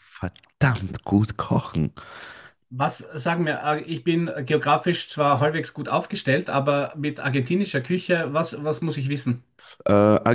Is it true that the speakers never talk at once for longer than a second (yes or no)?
yes